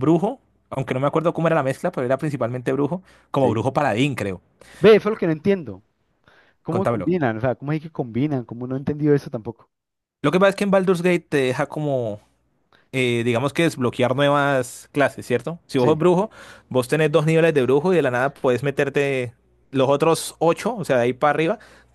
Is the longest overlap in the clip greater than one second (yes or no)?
no